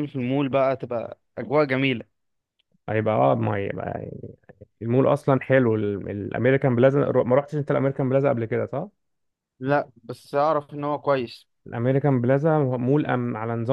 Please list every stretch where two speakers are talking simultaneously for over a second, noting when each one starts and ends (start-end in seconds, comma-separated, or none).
none